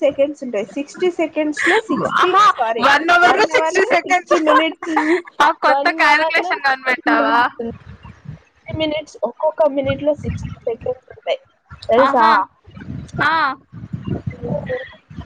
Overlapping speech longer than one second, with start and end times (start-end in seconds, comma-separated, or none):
5.7-7.4